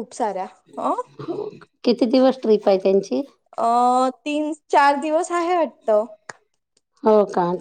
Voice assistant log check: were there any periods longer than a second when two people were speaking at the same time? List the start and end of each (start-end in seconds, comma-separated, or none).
none